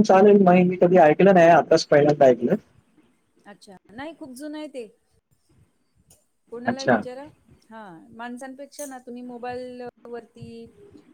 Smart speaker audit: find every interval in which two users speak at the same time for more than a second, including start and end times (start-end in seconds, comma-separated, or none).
none